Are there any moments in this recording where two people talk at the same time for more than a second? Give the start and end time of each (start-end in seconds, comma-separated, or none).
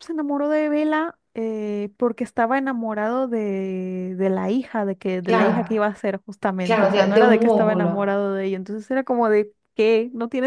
6.7-8.2